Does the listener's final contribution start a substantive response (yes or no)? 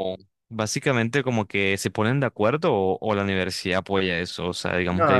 yes